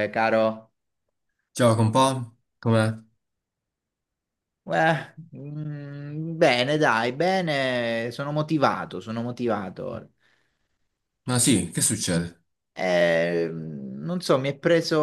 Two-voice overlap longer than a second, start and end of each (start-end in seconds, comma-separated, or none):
none